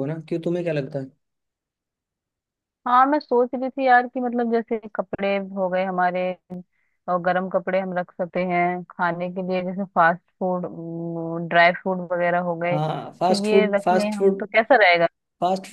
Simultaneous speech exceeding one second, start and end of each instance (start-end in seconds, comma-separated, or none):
12.7-14.4